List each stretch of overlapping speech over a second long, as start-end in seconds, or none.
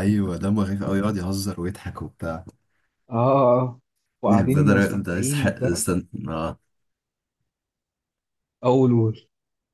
4.3-5.8